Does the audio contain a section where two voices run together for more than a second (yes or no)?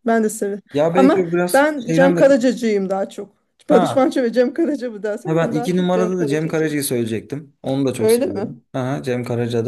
yes